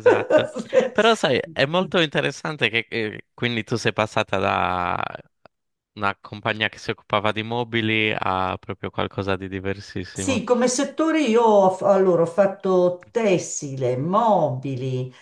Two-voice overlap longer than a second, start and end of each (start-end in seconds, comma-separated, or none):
none